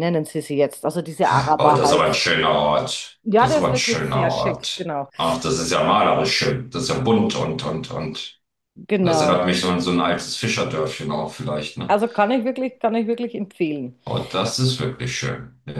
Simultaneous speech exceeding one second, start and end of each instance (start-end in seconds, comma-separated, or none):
3.2-5.1